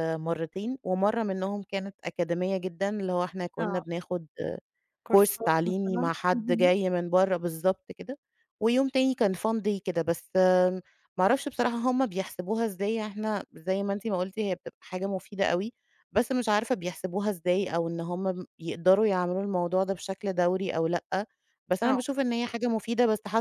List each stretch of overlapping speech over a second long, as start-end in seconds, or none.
5.1-6.7